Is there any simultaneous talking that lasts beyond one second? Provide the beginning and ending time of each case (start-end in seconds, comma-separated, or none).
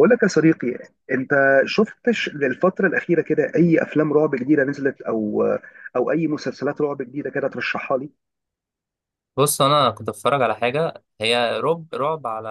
none